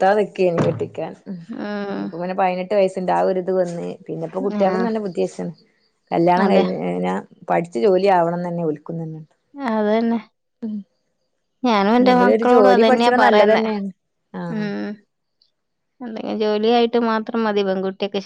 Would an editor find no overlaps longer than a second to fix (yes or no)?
no